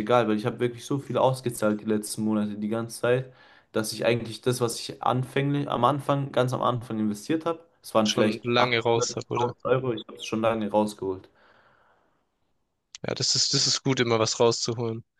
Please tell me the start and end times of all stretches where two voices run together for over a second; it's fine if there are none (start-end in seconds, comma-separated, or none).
8.0-9.5